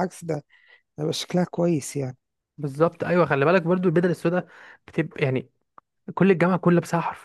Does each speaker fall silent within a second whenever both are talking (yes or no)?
yes